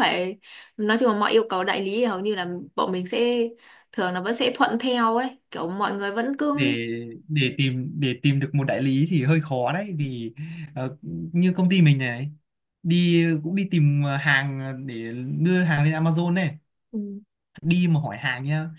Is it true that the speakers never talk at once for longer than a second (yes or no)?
yes